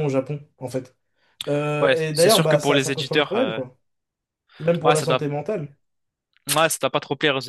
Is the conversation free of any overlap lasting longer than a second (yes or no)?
no